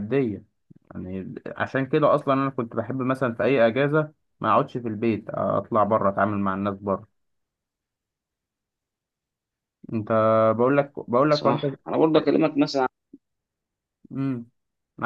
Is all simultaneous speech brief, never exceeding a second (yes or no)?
yes